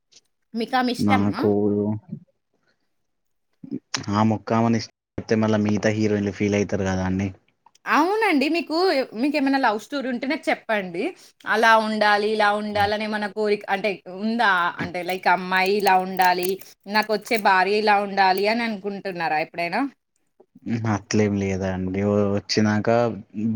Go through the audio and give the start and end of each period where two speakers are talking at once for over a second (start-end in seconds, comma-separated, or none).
none